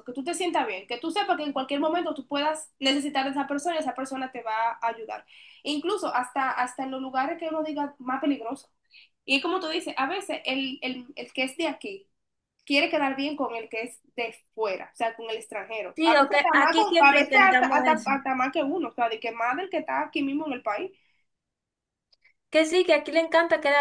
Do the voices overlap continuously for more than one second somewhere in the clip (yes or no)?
yes